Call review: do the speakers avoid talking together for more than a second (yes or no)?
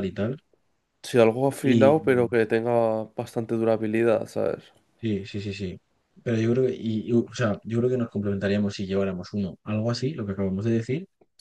yes